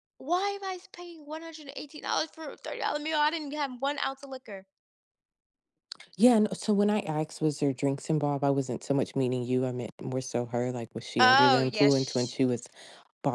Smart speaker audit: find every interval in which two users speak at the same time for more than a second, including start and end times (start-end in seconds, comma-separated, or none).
11.2-12.5